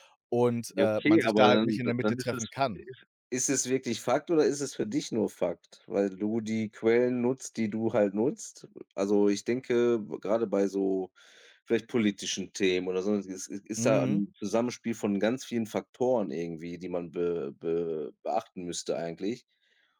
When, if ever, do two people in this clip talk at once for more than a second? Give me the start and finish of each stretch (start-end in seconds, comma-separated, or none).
0.7-2.9